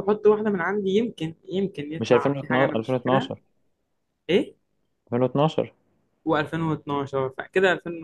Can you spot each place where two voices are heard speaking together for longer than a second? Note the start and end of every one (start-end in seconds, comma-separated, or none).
2.0-3.3